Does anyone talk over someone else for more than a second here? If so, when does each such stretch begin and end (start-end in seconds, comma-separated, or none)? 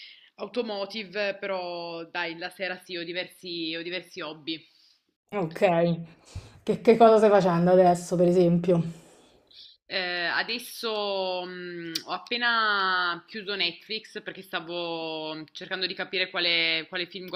none